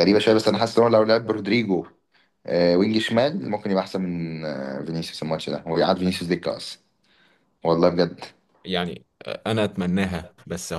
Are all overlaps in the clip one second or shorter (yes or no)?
yes